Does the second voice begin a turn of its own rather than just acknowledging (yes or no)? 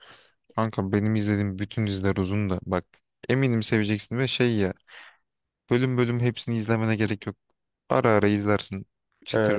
yes